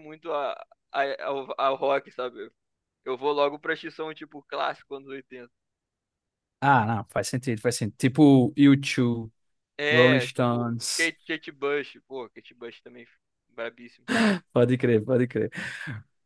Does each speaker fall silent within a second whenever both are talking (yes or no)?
no